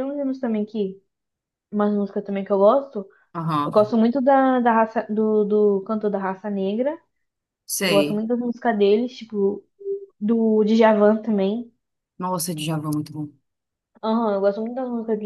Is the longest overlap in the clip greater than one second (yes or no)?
no